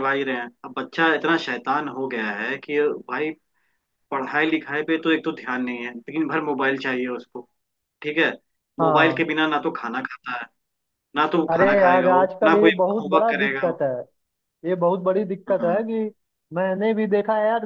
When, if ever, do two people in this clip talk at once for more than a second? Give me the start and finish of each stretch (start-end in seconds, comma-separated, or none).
11.5-13.8